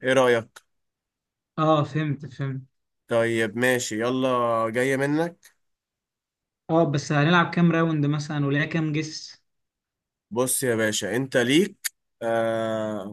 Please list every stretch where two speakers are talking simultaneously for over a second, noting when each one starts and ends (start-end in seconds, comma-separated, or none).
none